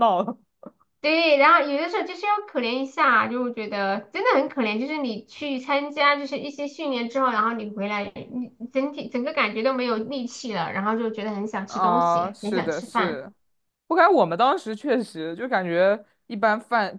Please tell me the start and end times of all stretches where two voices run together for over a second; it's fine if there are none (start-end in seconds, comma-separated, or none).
11.7-13.2